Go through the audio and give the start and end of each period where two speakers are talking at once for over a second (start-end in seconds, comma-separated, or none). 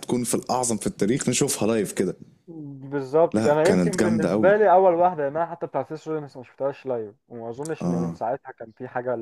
3.3-4.5